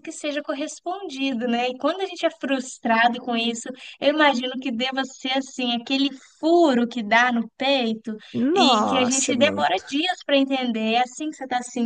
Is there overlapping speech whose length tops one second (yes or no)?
yes